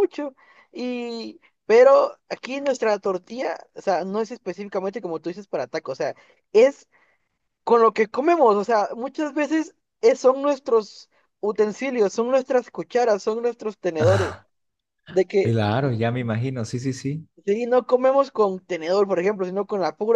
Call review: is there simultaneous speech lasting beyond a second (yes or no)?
no